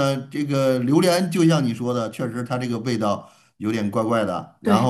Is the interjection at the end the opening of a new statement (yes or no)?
yes